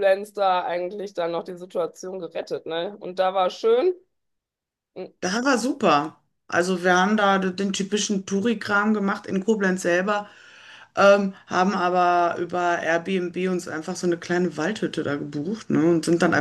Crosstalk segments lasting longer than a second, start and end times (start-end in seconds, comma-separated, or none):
none